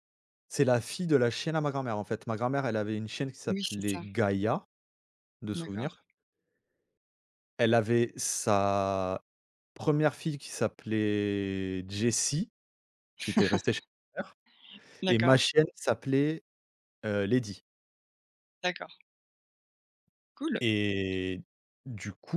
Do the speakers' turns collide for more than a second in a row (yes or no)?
no